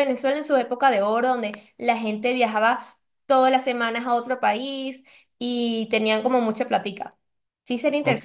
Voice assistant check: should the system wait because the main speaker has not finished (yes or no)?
no